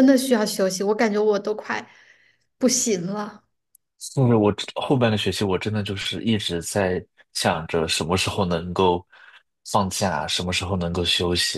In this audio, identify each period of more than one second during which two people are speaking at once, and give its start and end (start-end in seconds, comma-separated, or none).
none